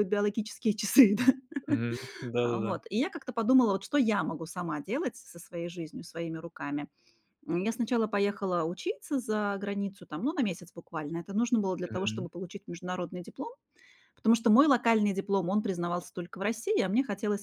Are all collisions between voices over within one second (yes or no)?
yes